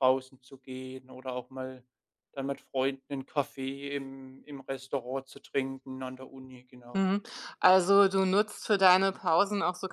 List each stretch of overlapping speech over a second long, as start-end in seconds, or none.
none